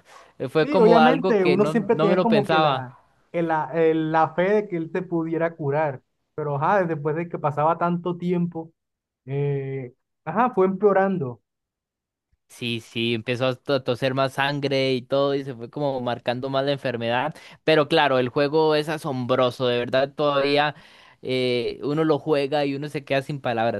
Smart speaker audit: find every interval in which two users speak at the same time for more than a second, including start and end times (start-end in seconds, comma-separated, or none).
0.6-2.9